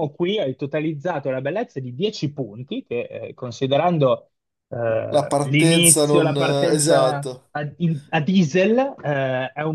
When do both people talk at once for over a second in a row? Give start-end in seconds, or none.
5.1-7.5